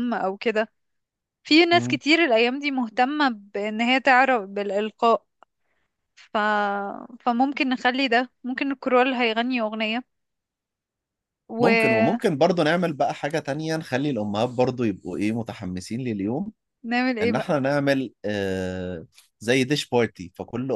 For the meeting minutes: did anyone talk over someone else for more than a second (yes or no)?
no